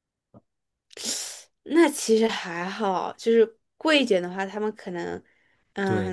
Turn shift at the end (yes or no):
yes